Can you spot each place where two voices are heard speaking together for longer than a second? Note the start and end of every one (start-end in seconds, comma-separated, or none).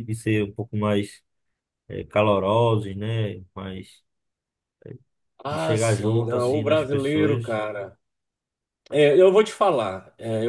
5.5-7.6